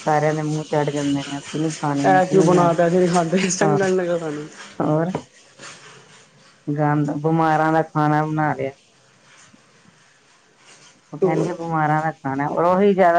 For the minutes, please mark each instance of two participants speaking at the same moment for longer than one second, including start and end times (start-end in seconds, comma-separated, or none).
2.3-3.9